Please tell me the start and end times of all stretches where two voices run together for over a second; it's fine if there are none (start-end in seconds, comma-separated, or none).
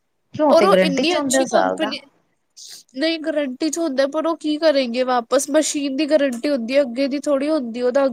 0.6-1.9